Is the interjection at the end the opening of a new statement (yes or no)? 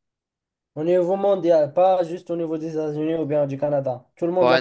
yes